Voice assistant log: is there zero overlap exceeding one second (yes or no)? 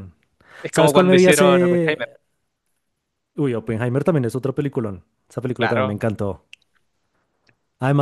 no